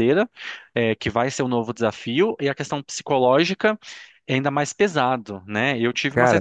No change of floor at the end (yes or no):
yes